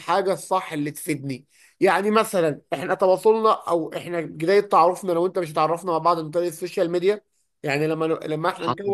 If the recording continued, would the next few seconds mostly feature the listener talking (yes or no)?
no